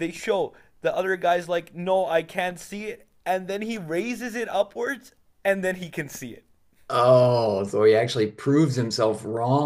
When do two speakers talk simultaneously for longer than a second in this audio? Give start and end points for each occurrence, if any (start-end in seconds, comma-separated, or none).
none